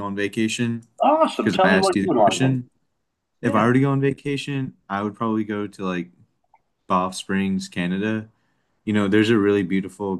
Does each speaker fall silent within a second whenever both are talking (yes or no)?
no